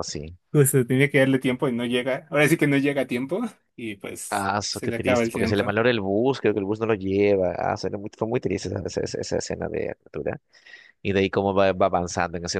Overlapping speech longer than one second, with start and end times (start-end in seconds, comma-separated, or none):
4.3-5.8